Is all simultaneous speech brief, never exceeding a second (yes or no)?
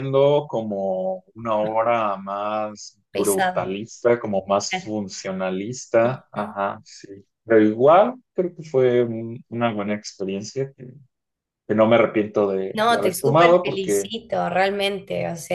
no